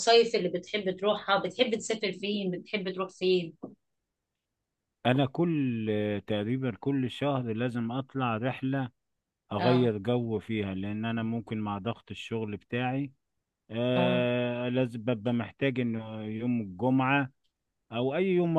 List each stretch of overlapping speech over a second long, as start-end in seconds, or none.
none